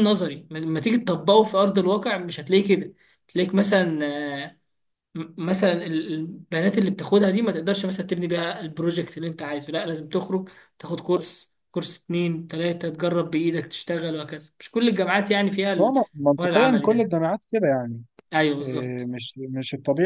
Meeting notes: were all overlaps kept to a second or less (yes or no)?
no